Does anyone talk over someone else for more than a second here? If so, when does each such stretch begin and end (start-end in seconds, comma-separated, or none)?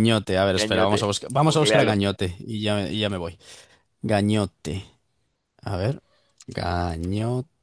0.5-2.0